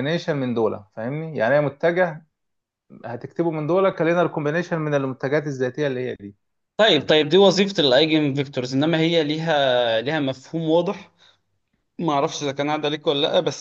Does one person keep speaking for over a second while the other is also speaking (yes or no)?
no